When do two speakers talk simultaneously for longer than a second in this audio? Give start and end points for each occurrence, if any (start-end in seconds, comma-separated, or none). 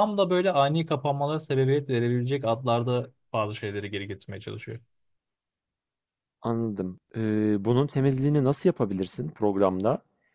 none